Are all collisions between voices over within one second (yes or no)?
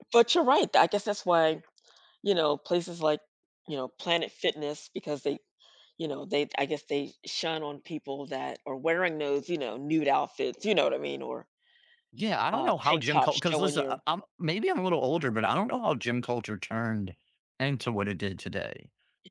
no